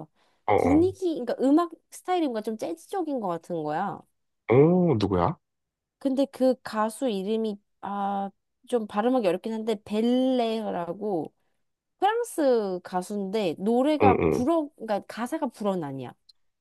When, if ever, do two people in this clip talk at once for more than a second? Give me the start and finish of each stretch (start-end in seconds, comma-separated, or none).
none